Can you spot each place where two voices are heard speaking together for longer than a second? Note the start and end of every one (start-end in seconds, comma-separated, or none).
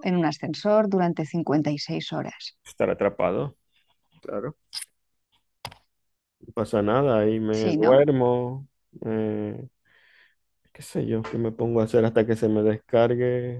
none